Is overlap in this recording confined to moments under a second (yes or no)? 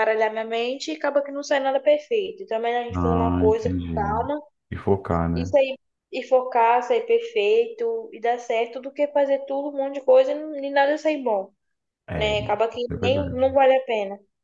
no